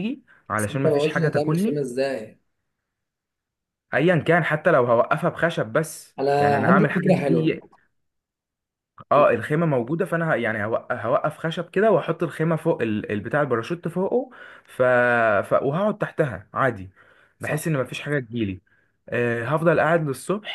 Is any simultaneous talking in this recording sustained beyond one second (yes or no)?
yes